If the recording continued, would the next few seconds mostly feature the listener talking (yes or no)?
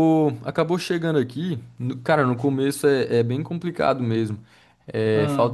no